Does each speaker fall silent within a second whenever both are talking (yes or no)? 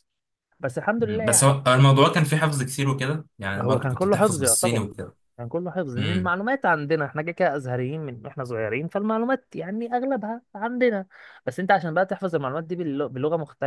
no